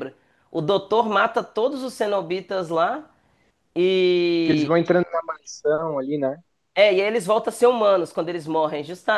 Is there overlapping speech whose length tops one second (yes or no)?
no